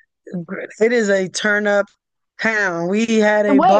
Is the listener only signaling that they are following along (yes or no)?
yes